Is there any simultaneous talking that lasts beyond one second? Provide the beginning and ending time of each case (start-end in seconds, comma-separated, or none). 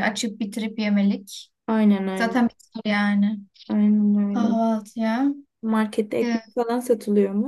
none